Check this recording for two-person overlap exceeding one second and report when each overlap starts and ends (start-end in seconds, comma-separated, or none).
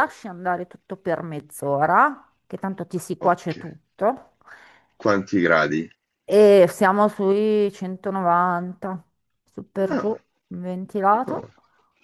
none